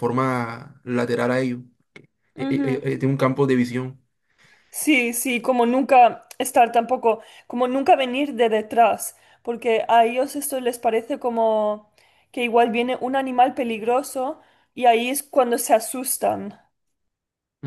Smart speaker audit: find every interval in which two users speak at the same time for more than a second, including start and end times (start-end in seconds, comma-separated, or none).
none